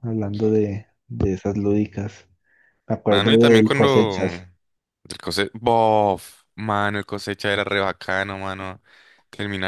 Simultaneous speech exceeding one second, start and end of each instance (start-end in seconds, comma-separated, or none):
3.1-4.5